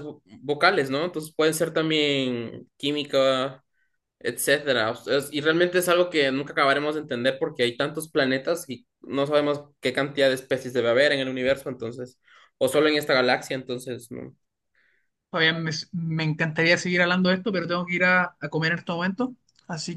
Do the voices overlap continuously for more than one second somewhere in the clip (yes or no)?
no